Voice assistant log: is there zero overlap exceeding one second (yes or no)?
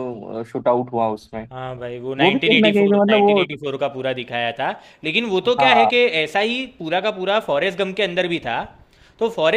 no